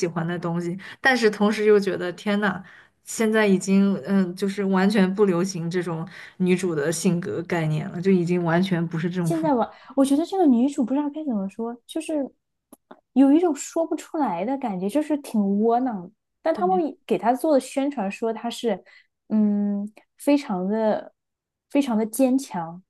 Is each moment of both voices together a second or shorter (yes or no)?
yes